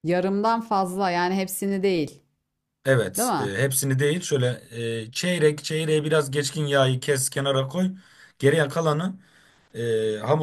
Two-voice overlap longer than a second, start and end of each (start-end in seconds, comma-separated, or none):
none